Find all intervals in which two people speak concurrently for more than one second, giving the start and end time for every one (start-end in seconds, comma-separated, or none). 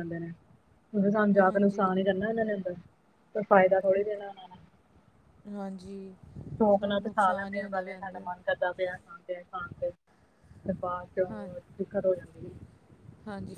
6.8-8.2